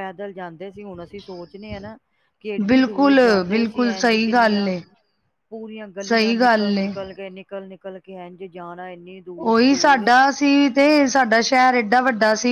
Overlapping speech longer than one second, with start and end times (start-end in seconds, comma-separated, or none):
2.7-4.7